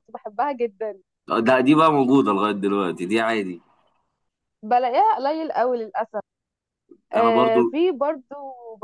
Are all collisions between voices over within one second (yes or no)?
yes